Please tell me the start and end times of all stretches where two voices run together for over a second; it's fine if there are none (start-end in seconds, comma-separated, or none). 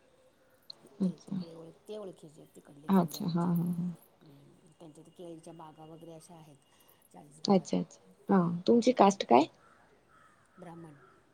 none